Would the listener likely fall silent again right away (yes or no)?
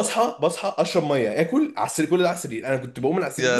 yes